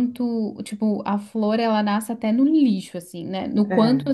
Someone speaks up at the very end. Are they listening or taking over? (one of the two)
listening